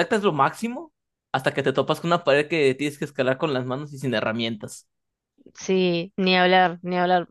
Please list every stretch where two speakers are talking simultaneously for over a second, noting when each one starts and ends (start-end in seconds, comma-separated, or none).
none